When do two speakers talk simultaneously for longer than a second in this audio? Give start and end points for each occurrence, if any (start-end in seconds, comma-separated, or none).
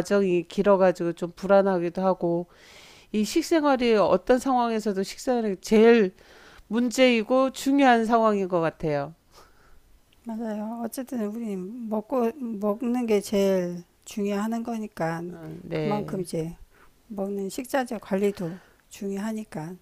none